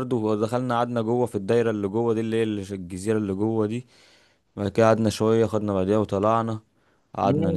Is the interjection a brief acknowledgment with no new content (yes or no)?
no